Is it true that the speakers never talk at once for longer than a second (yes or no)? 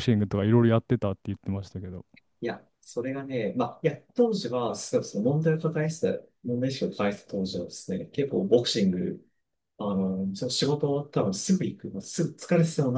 yes